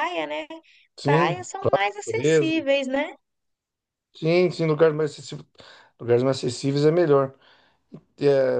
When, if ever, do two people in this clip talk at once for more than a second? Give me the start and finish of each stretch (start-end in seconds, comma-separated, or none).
none